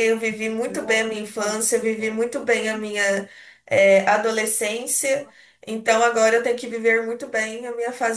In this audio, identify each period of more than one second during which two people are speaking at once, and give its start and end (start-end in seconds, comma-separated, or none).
0.6-2.2